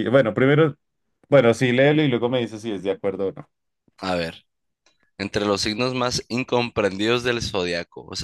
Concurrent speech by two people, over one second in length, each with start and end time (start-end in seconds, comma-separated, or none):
none